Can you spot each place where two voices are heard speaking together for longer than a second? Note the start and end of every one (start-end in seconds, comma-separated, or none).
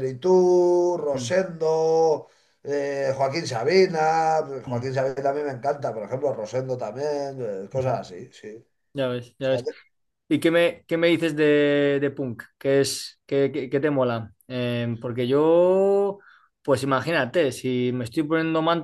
none